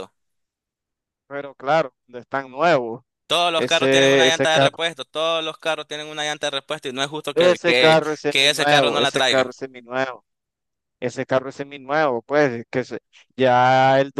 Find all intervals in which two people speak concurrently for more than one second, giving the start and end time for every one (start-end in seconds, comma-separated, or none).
3.6-4.8, 7.3-9.5